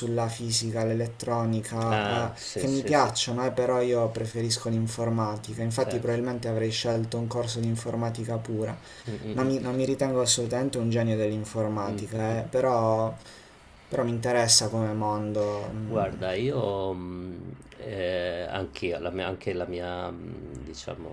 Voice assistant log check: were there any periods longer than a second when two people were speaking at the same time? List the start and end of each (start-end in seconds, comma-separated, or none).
1.9-3.1